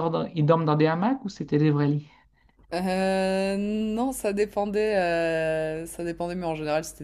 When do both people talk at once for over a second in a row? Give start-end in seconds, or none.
none